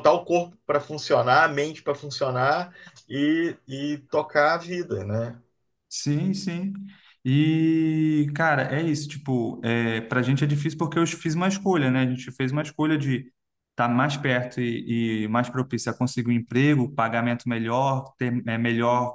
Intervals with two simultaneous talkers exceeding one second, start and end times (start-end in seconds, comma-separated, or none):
none